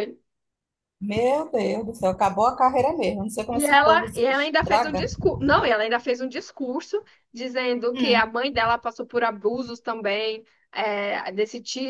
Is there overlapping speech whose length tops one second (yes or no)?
yes